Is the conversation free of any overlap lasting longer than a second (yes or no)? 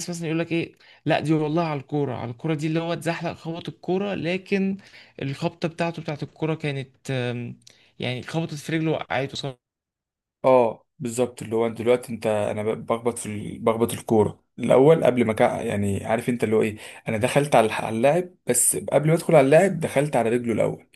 yes